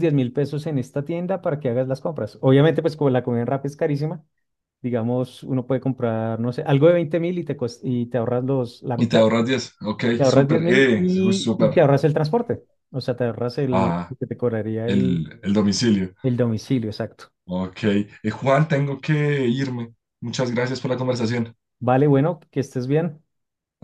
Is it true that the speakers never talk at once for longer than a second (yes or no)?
no